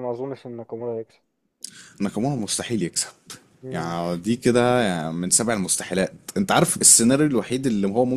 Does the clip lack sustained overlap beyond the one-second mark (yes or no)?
yes